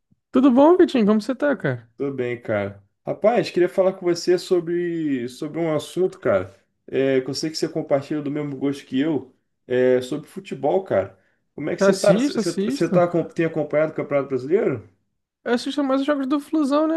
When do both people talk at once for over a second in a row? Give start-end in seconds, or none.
11.8-13.0